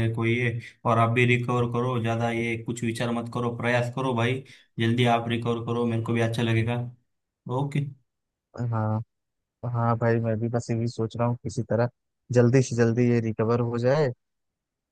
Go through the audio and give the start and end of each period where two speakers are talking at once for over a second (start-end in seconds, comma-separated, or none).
none